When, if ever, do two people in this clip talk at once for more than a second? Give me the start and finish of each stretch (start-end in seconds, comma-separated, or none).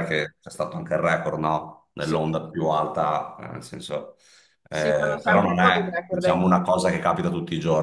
4.7-6.5